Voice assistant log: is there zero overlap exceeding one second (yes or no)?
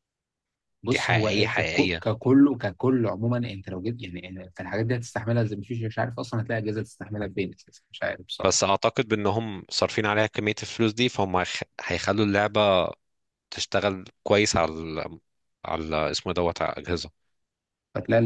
no